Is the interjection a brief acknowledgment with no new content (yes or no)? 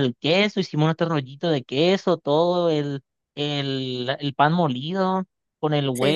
yes